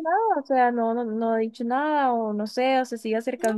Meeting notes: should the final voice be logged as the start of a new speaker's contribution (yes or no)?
no